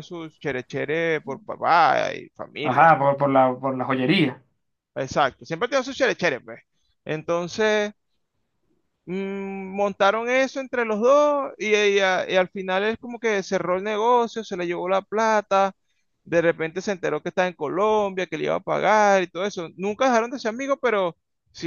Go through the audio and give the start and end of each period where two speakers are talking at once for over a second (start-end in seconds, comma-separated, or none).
none